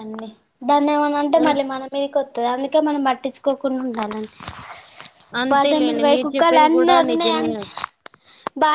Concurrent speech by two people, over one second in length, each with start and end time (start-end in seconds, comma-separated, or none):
5.5-7.5